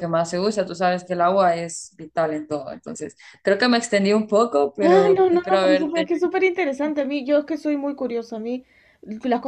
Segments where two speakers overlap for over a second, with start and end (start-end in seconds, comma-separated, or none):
4.8-6.1